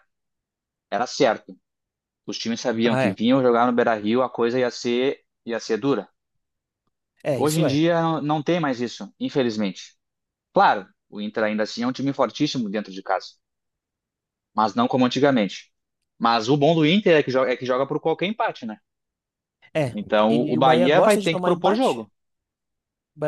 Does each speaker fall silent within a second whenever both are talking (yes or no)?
no